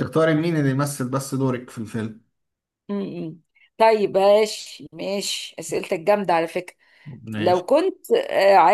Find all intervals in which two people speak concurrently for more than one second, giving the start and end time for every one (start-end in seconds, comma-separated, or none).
none